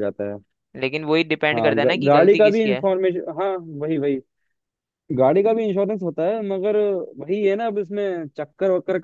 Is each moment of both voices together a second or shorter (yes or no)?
no